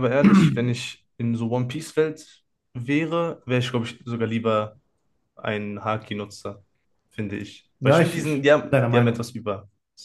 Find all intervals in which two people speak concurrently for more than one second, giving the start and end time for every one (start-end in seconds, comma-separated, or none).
7.8-9.3